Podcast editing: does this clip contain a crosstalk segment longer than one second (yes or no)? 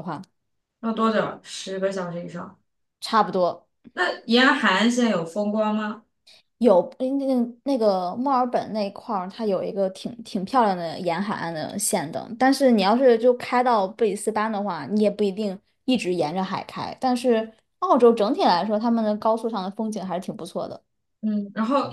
no